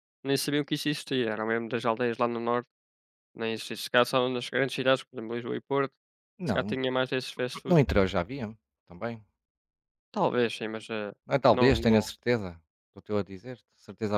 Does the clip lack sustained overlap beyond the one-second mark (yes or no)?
yes